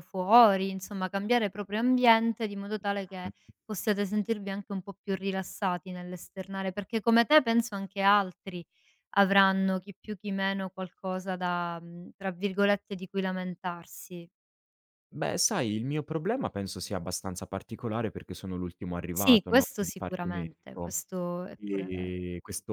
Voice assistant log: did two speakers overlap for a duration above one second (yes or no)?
yes